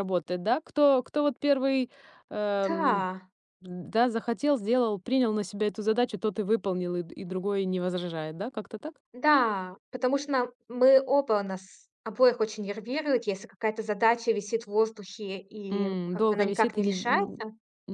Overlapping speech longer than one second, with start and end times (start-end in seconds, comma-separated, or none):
15.7-17.4